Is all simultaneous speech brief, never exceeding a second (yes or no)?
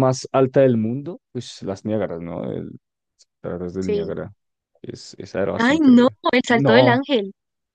no